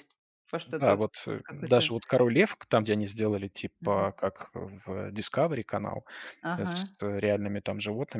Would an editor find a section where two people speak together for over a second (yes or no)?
yes